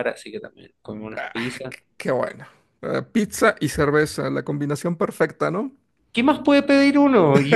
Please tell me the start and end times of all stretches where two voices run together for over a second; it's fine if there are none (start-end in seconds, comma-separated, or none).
none